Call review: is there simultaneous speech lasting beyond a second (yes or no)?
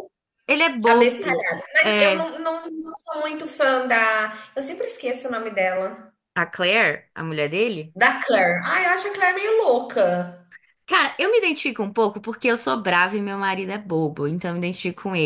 yes